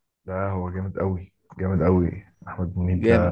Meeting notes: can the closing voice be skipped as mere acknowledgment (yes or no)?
no